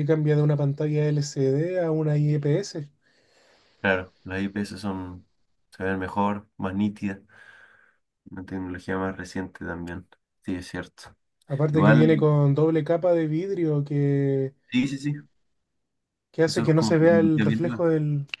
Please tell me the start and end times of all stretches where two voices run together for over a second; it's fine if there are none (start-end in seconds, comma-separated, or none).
16.5-17.8